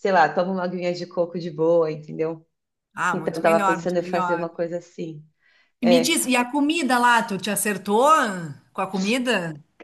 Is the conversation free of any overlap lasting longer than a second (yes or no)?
no